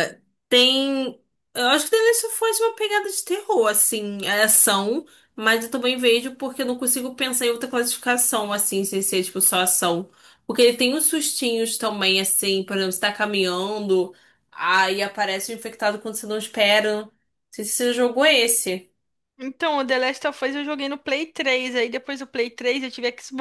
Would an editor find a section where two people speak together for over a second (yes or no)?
no